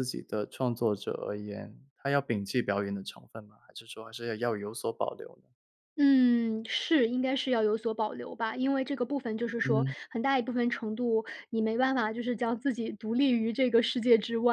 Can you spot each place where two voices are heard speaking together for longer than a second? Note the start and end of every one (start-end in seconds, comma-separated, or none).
none